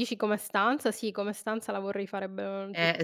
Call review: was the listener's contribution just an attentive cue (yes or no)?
no